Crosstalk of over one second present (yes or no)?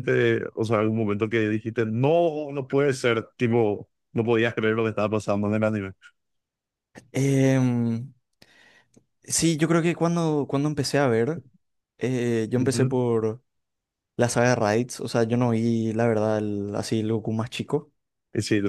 no